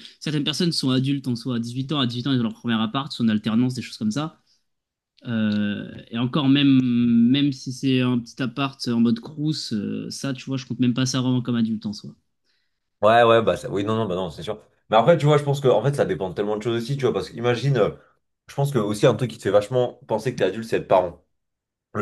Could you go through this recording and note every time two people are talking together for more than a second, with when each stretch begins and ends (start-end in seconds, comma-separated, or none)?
none